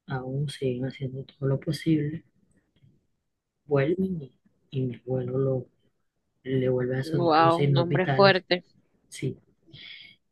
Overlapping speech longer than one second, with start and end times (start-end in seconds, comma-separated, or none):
7.0-8.4